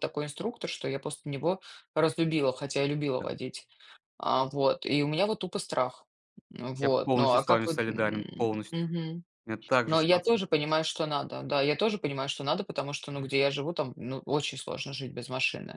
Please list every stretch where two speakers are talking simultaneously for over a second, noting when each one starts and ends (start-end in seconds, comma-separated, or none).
6.8-8.9